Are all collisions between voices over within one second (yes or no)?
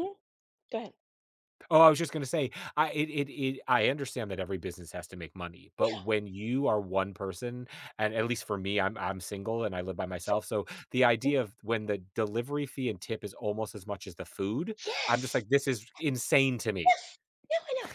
yes